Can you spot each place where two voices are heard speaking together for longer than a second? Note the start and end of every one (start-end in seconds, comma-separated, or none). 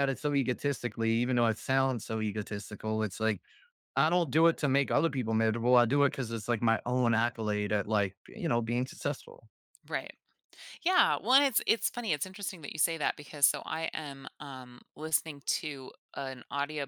none